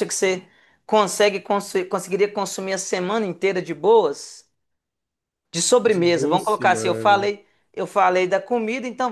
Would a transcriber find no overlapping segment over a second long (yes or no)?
no